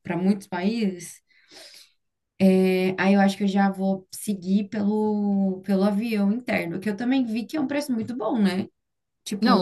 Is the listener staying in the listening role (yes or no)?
no